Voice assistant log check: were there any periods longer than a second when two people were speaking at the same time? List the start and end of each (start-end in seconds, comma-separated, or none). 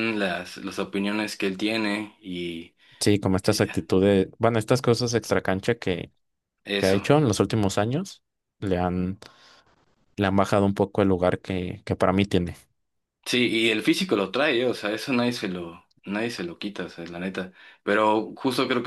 none